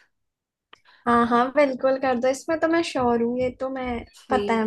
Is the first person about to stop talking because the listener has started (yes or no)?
yes